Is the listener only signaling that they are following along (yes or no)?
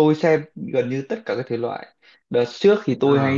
yes